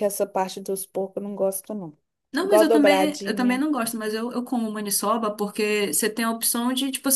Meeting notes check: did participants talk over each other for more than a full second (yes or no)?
yes